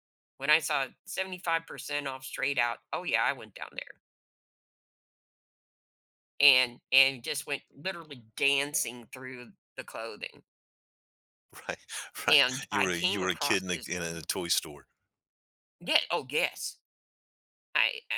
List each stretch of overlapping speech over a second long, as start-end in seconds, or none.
12.3-13.9